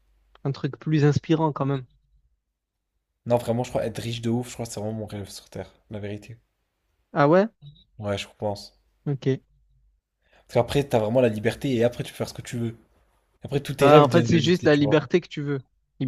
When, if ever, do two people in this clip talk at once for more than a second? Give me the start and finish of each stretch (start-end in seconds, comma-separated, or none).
13.8-15.1